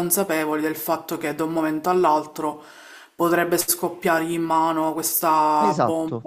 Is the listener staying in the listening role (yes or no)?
yes